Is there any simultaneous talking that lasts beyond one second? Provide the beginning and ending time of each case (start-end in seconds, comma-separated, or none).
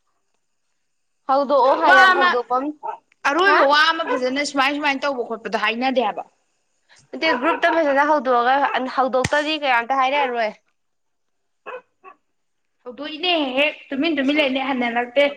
none